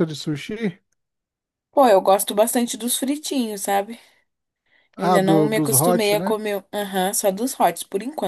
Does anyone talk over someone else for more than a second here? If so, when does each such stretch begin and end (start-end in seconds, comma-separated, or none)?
5.0-6.3